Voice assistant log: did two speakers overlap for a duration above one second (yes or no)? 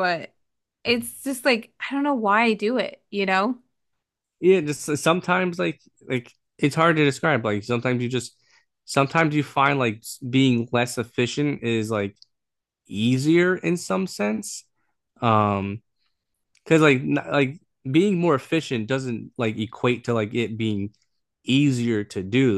no